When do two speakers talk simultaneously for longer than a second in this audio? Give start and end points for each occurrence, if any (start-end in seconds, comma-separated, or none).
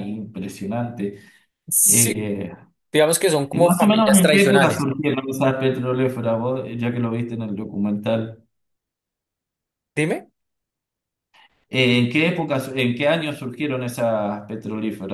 3.5-4.9